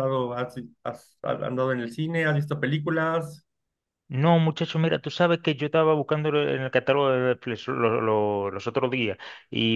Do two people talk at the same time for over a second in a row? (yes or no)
no